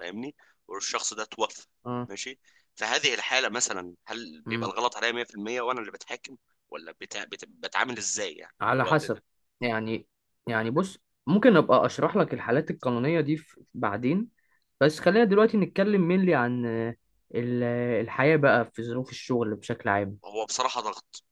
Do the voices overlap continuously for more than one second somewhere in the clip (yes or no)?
no